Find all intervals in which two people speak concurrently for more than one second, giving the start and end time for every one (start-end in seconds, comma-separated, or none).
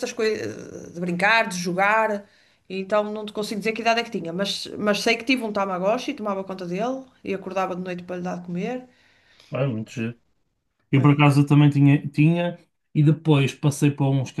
none